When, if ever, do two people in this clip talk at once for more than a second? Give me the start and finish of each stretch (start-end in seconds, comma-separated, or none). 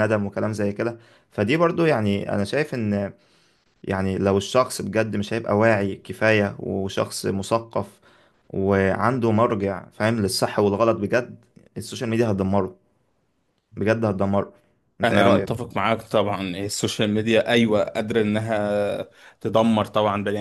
none